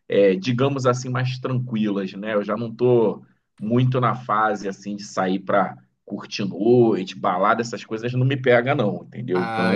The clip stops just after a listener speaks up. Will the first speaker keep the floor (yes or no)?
no